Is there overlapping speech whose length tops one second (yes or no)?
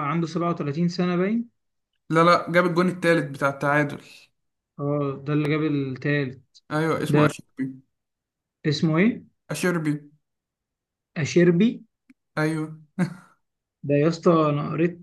no